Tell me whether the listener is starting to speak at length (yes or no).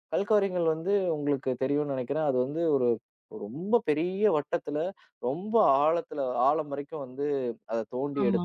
no